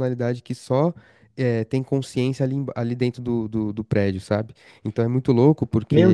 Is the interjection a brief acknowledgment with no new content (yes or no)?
yes